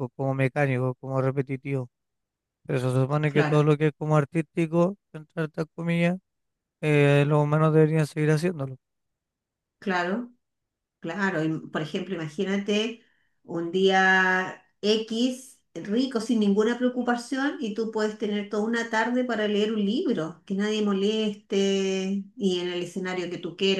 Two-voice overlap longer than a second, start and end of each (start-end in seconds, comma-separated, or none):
none